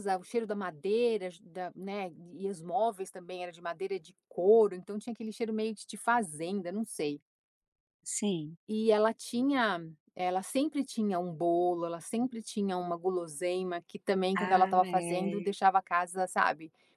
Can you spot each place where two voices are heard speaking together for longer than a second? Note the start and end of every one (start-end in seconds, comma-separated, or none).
14.3-15.6